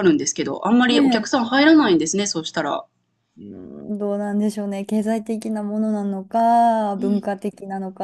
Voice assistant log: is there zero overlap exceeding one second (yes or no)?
yes